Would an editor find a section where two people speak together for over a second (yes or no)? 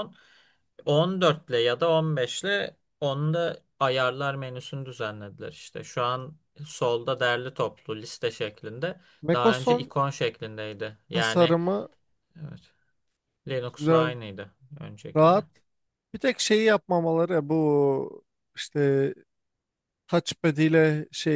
no